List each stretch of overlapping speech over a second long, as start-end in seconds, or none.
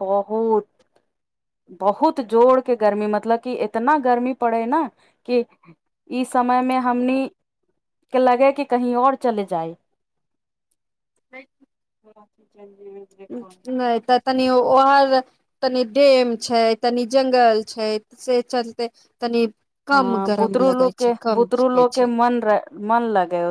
19.9-22.1